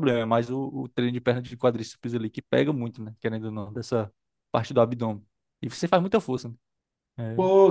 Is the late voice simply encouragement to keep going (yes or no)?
no